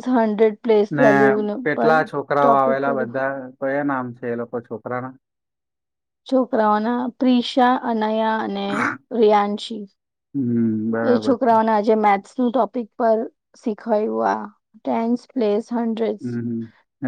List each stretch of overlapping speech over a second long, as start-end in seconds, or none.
none